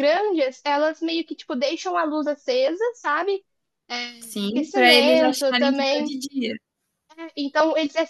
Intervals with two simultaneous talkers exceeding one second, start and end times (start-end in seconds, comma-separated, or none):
4.2-6.1